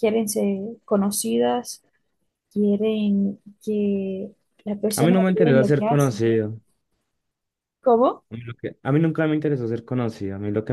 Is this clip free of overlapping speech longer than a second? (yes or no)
no